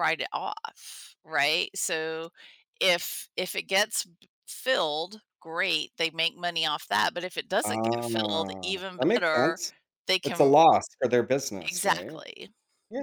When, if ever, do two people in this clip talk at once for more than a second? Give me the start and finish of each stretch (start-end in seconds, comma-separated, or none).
7.6-9.6